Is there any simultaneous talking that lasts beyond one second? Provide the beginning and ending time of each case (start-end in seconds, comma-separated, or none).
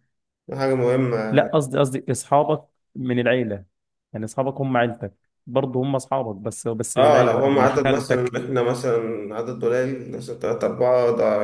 7.0-8.3